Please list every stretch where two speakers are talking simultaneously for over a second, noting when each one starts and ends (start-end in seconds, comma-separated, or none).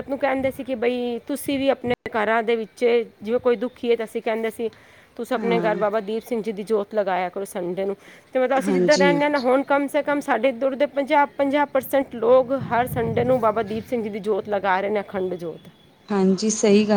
none